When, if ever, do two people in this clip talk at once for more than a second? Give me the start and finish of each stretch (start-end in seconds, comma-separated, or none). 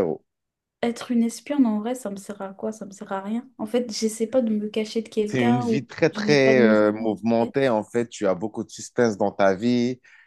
5.2-7.5